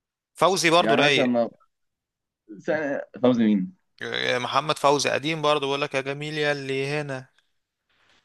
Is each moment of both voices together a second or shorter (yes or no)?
yes